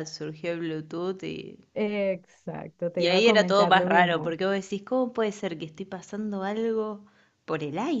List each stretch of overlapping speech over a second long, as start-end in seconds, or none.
3.0-4.3